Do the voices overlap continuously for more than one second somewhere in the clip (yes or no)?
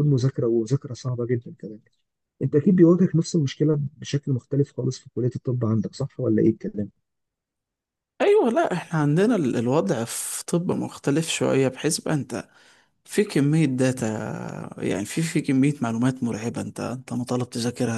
no